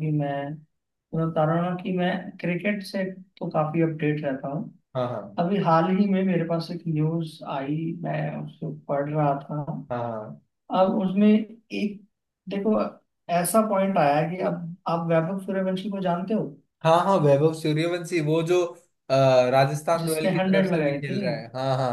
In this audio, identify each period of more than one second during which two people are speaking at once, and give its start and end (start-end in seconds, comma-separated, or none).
20.0-21.2